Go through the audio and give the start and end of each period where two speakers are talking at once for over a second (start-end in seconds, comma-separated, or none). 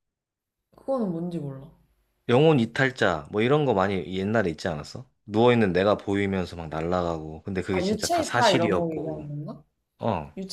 7.7-9.2